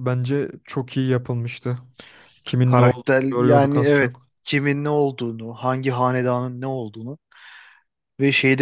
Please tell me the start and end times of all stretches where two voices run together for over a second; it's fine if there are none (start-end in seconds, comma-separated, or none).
2.6-4.3